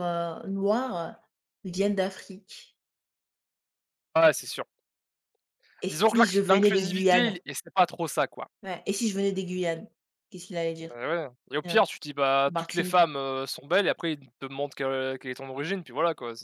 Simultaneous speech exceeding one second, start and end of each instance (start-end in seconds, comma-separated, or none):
5.9-7.4